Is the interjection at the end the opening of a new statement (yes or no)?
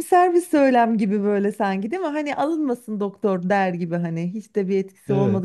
yes